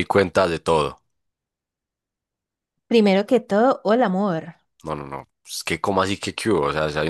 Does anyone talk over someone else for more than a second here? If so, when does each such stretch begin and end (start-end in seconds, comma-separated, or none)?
none